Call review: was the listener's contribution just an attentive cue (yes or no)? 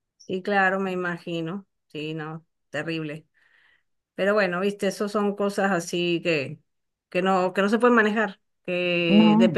yes